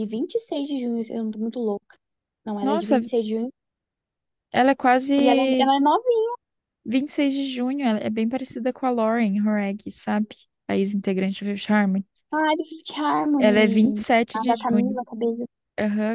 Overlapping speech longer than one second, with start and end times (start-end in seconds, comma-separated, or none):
13.4-15.0